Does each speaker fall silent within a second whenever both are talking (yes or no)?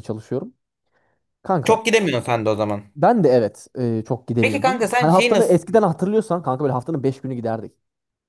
no